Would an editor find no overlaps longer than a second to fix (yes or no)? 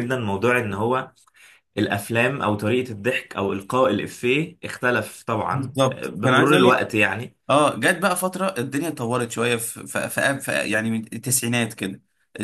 no